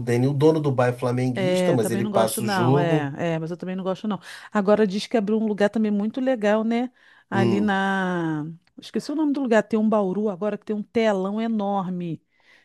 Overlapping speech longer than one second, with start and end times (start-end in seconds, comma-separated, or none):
1.3-3.1